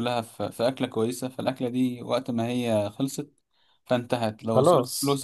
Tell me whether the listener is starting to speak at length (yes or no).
no